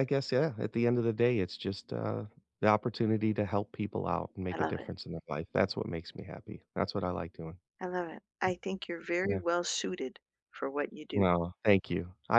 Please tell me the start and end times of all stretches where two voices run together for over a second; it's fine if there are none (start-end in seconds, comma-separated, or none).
none